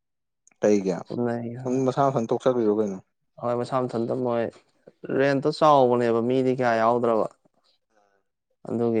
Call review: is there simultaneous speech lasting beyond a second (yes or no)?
no